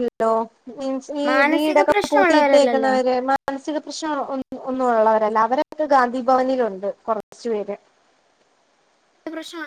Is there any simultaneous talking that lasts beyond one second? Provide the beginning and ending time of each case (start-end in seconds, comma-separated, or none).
1.3-2.9